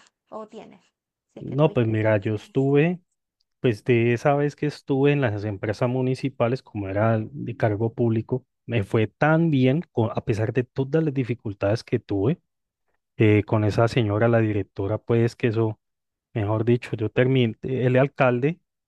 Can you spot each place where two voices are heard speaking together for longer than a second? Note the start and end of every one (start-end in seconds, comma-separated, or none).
1.4-2.7